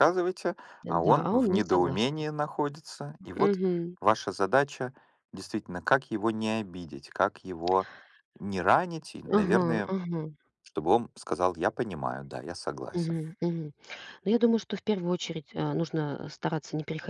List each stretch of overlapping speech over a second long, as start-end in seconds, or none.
0.8-2.2